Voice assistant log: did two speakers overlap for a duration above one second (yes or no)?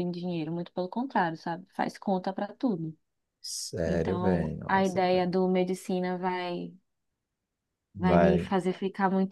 yes